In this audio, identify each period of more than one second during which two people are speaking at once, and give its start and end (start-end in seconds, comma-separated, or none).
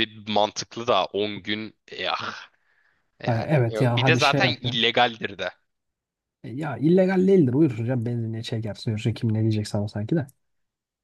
3.2-4.8